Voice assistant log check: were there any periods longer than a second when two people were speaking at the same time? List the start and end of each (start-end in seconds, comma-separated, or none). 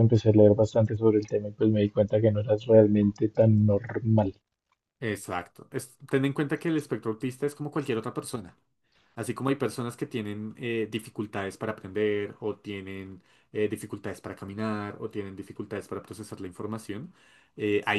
none